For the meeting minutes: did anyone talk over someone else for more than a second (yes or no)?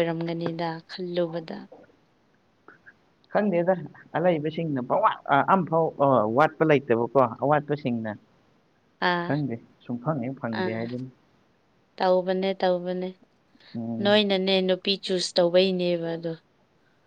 no